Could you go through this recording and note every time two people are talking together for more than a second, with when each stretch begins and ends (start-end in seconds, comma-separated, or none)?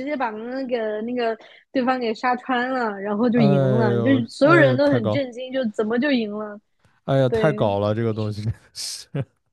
3.3-5.3